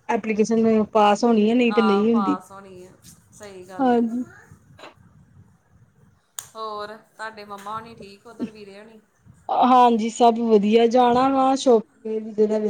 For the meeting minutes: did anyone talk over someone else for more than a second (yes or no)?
no